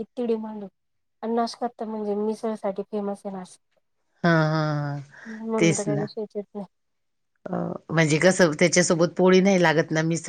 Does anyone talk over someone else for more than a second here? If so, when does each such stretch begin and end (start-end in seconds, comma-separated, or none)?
none